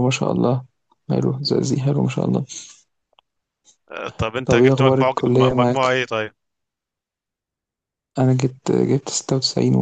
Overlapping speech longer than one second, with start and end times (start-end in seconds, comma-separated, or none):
4.4-5.9